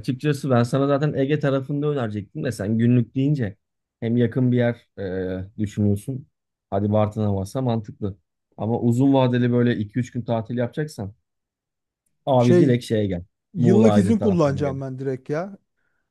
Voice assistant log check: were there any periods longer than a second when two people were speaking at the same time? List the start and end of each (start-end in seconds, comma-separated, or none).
13.5-14.8